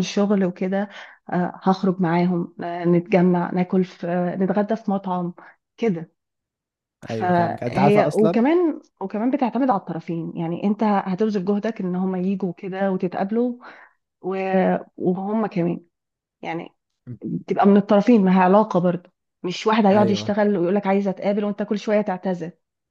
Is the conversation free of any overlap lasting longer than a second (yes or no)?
no